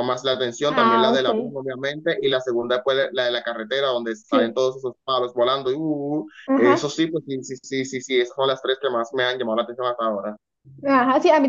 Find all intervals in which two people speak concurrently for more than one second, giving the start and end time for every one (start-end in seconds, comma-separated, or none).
none